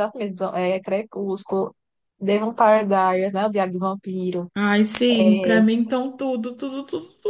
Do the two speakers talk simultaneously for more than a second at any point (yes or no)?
no